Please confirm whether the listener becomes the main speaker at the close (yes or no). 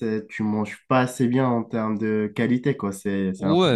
yes